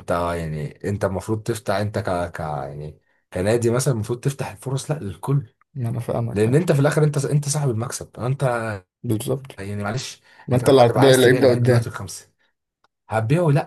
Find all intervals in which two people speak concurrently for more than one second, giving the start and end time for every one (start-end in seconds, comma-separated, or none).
10.5-11.8